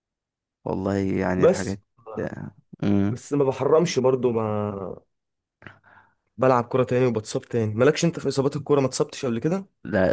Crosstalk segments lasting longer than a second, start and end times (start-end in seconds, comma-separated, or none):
none